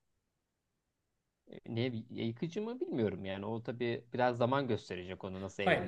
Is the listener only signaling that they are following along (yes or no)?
no